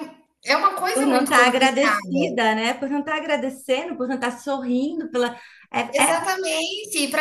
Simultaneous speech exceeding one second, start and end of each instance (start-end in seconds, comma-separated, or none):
0.9-2.3